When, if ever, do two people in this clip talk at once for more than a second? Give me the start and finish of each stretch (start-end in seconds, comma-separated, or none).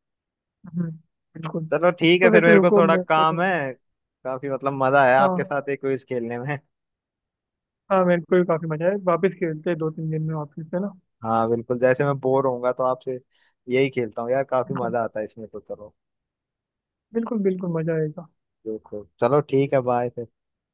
1.7-3.4